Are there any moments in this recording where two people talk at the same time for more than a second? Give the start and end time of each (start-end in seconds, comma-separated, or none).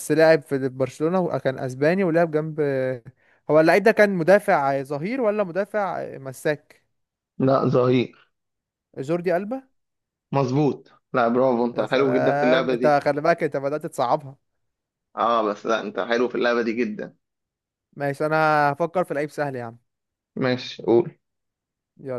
11.7-13.0